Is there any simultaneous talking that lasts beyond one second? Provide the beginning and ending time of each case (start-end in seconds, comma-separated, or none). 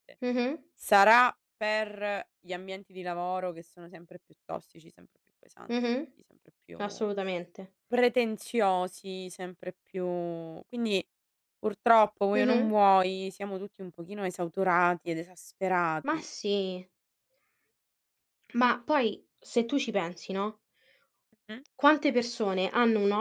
none